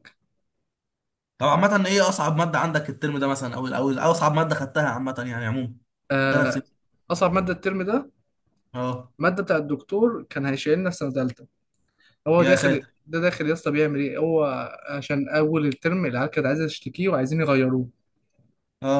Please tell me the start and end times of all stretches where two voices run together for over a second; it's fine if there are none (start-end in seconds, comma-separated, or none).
none